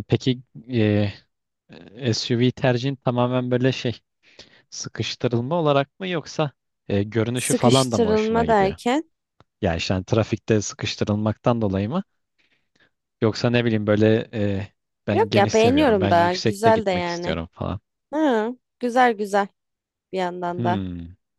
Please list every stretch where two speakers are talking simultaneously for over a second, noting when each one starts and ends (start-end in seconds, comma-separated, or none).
7.3-8.8, 15.1-17.4